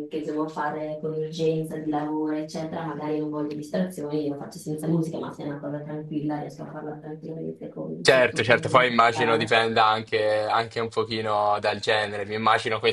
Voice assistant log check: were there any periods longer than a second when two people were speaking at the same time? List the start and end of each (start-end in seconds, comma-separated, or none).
8.1-9.6